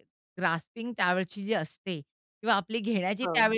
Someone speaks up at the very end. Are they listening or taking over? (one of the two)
listening